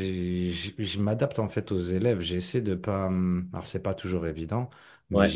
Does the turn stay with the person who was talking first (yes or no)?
yes